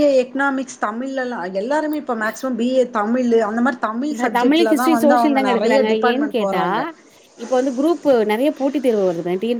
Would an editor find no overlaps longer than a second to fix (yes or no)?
no